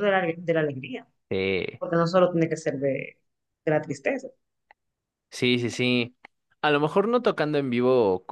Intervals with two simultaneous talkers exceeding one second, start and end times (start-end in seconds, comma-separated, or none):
none